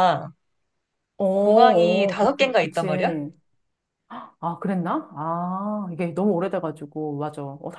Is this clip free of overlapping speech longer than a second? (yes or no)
no